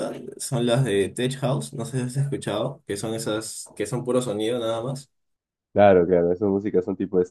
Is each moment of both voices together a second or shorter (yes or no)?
yes